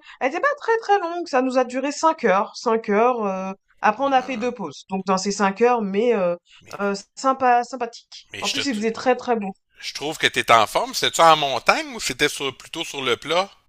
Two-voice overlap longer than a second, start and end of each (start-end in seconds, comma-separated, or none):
none